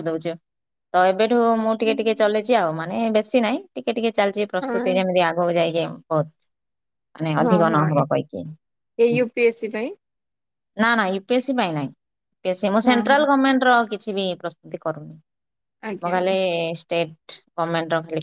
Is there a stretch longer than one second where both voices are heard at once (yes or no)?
no